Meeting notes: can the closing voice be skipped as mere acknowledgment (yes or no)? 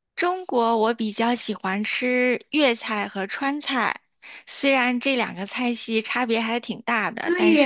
no